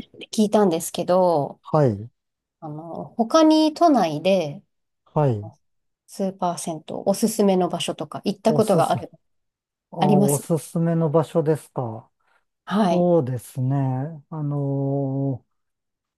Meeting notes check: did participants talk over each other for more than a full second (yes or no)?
no